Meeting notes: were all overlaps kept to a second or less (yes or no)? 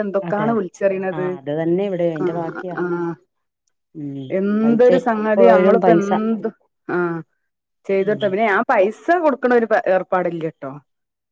no